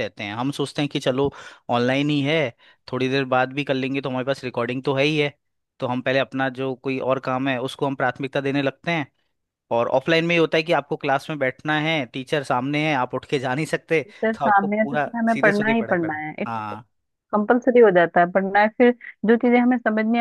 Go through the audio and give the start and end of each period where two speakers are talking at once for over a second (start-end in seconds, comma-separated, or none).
14.4-16.4